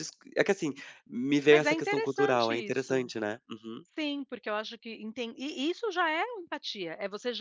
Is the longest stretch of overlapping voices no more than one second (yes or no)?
no